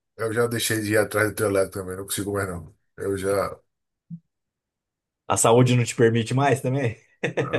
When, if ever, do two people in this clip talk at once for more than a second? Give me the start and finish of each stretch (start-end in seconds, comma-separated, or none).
none